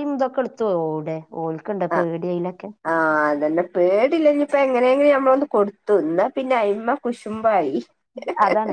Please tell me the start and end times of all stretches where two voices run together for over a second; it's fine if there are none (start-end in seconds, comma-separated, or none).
none